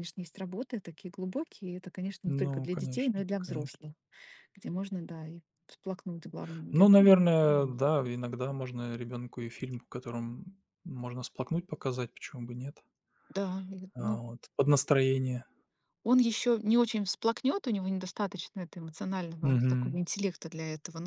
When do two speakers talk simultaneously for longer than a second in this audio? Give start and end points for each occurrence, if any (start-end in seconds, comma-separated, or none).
2.2-3.8